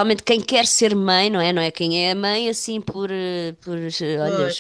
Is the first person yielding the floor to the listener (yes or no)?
no